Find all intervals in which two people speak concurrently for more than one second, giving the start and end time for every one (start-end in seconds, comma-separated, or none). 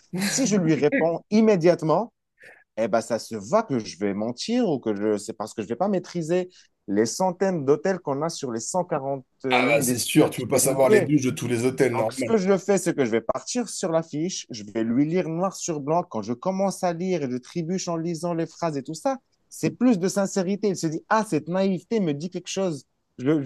9.5-11.1